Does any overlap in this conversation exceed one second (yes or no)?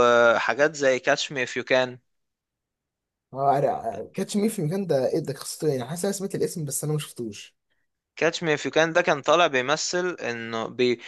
no